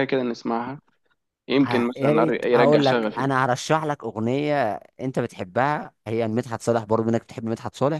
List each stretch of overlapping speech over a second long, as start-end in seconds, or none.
1.6-3.3